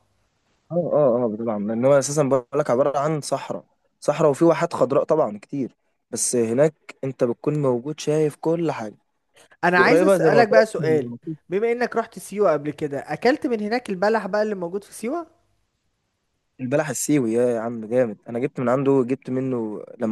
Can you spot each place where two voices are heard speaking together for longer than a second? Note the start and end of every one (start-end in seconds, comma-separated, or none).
9.8-11.1